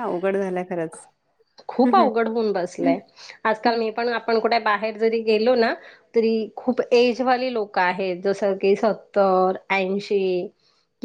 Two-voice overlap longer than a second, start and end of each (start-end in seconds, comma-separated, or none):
none